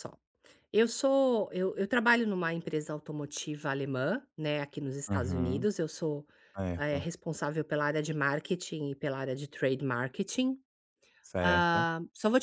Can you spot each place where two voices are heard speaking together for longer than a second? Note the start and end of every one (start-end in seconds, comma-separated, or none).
none